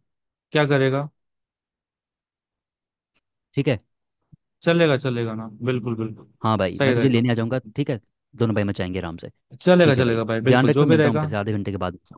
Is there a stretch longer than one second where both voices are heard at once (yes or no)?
yes